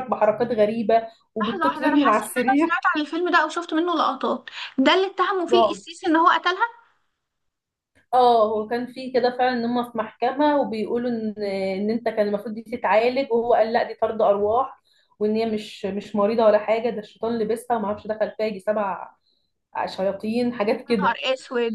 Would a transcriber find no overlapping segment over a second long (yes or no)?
no